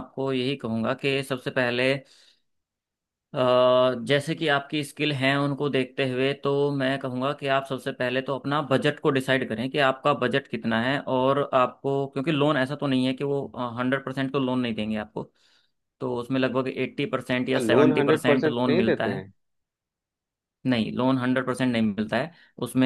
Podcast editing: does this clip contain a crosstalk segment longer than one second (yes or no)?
yes